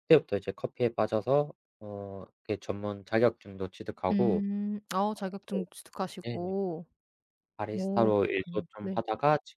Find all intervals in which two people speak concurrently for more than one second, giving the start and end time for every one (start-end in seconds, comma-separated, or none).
7.7-9.0